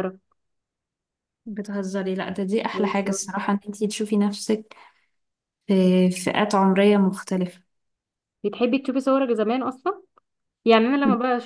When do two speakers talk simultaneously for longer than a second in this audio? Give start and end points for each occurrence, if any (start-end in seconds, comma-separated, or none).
none